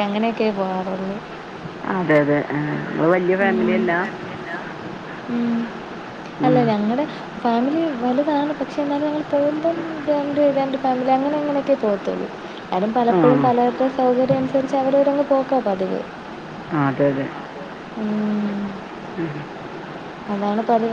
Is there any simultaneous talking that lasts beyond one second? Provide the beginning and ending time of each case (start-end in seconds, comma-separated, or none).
none